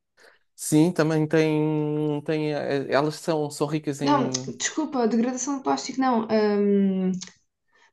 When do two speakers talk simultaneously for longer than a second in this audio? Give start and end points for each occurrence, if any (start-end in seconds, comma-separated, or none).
none